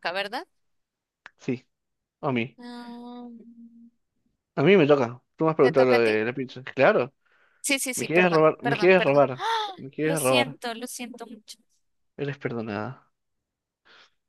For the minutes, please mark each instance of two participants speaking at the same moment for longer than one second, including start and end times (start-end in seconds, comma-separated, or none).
7.9-9.2